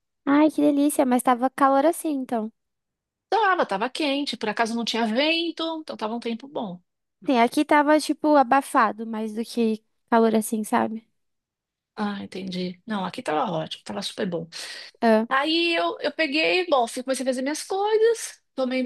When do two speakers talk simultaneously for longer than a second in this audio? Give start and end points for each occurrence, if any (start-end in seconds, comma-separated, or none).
none